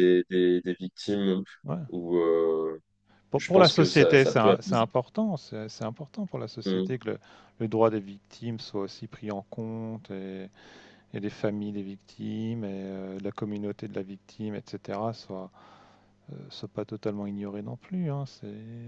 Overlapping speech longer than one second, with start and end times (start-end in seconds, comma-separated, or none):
3.3-4.8